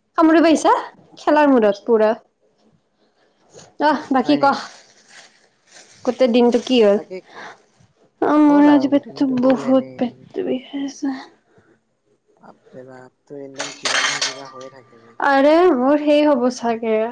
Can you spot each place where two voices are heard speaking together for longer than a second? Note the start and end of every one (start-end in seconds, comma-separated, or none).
8.4-10.3